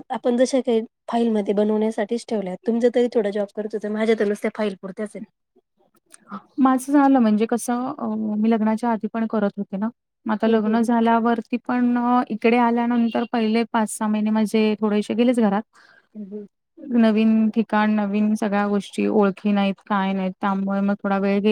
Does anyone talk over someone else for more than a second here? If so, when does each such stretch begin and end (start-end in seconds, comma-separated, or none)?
none